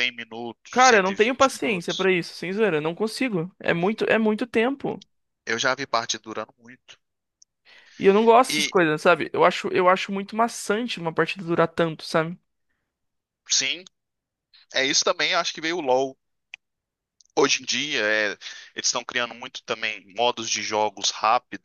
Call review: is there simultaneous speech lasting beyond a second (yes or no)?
yes